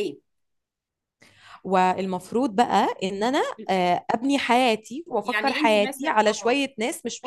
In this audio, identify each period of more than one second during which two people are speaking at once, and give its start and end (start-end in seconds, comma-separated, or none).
5.2-6.6